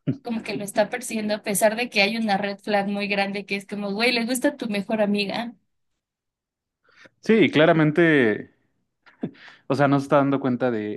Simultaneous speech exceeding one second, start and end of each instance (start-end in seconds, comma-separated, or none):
none